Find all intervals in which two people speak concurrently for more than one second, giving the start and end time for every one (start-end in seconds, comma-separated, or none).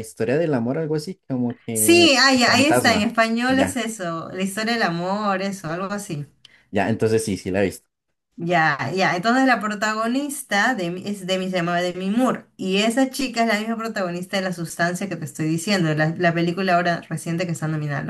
1.7-3.8